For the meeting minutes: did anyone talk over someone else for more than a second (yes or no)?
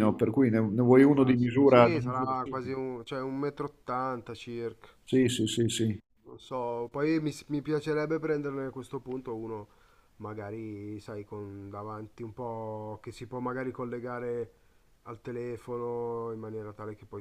yes